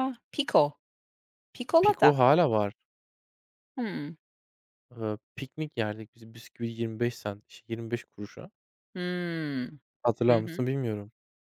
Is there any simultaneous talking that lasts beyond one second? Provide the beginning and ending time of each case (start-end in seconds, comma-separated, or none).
none